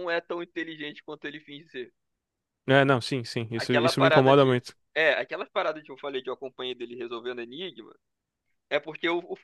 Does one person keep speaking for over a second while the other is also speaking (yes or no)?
yes